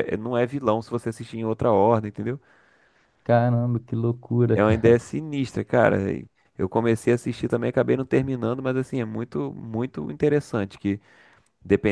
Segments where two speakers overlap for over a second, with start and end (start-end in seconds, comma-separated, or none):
none